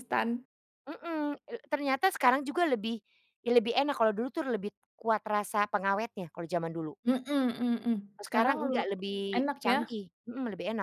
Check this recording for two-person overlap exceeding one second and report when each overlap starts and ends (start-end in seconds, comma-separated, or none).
none